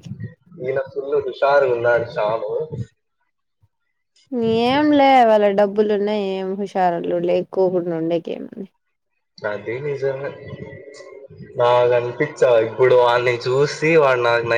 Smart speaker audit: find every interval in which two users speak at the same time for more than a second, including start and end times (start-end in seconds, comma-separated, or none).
none